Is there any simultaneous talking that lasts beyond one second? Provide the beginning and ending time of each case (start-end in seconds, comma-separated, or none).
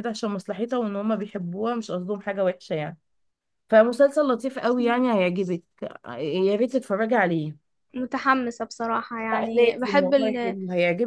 9.3-10.6